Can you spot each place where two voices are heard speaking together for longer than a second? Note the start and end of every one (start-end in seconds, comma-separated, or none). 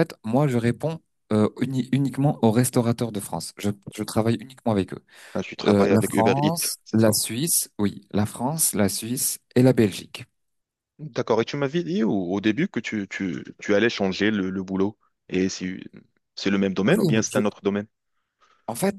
5.6-7.1